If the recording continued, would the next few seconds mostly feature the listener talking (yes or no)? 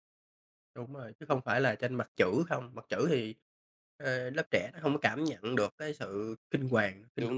yes